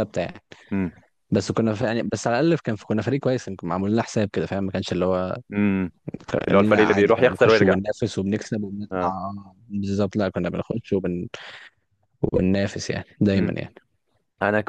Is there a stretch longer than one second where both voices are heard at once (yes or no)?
yes